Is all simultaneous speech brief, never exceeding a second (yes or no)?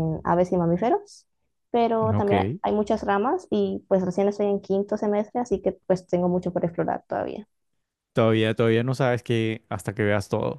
yes